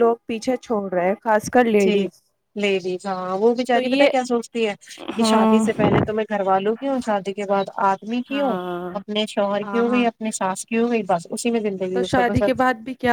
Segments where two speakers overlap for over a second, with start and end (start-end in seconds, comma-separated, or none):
none